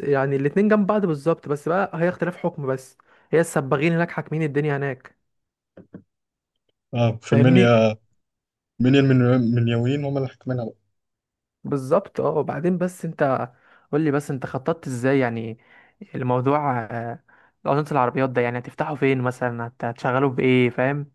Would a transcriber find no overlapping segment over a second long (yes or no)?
yes